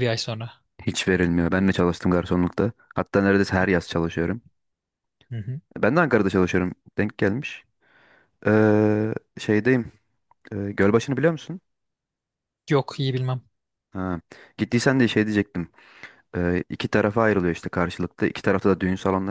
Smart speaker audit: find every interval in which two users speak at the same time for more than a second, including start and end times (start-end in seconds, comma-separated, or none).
none